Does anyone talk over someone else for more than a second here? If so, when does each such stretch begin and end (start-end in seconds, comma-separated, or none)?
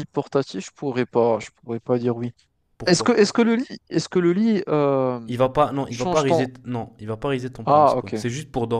none